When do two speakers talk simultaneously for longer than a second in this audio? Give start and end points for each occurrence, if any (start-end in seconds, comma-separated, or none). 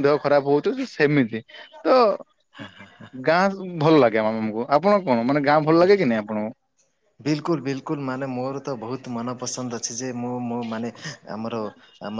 none